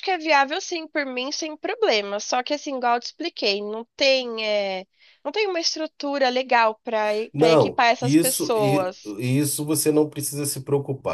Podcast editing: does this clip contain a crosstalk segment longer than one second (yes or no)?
yes